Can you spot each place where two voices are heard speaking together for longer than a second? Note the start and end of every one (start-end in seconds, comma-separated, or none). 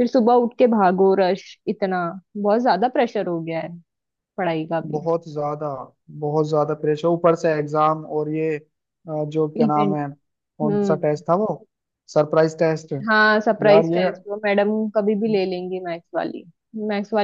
none